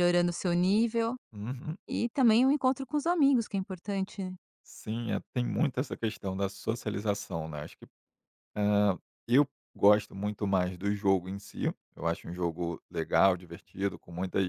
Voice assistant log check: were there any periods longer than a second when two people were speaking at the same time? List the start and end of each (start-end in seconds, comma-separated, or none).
none